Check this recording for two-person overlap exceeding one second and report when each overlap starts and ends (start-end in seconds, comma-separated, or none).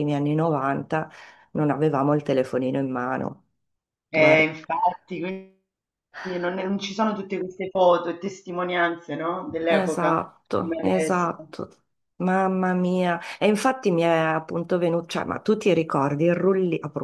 9.7-11.3